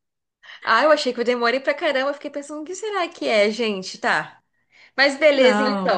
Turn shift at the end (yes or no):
yes